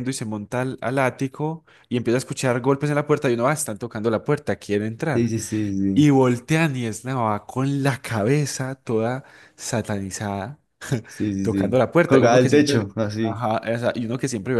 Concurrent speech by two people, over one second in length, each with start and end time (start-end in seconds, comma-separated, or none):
11.4-13.4